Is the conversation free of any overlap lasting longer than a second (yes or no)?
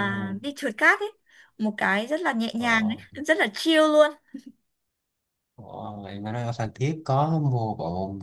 yes